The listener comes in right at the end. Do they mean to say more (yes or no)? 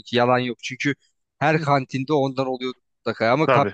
no